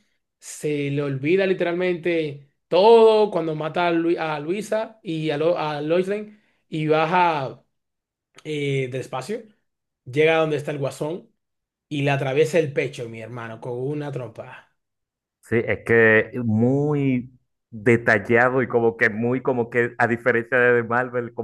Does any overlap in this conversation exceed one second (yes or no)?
no